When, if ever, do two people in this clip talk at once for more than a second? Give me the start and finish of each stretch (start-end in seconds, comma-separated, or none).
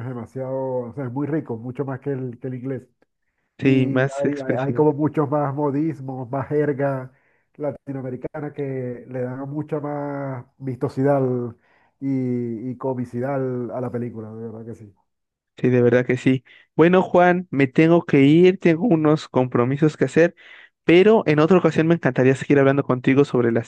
3.6-4.8